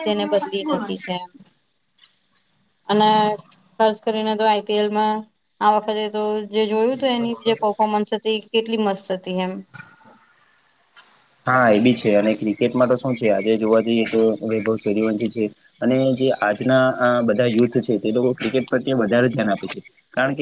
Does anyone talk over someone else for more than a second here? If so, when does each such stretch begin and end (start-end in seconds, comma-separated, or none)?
none